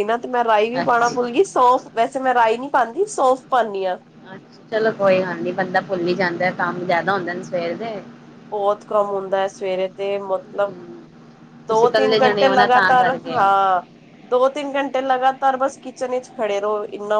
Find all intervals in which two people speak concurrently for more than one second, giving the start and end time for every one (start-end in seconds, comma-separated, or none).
11.7-13.4